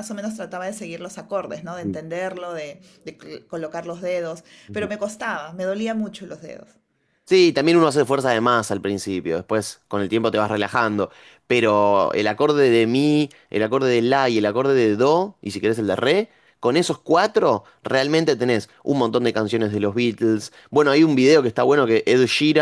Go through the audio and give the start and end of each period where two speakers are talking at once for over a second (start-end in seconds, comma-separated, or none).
none